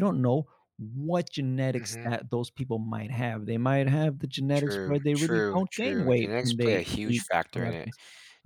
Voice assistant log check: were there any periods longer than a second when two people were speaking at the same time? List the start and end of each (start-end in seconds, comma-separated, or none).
4.5-7.9